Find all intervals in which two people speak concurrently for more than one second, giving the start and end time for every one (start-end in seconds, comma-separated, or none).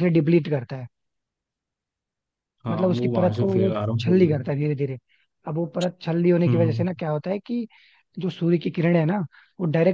2.7-4.4